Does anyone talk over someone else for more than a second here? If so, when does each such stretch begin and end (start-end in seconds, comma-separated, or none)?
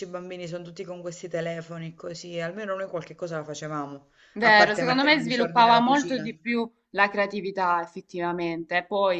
4.3-6.3